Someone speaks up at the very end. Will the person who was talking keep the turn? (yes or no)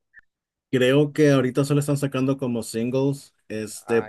yes